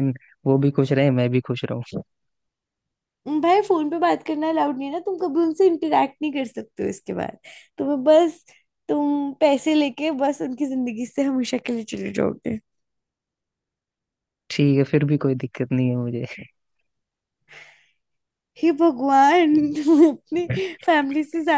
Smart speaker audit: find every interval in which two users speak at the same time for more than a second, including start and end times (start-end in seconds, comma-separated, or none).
none